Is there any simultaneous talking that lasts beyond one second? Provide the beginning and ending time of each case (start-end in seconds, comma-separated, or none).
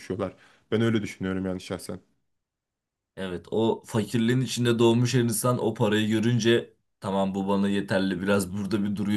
none